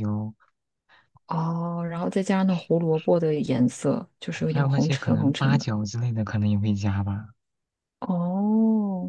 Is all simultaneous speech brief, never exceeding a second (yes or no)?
no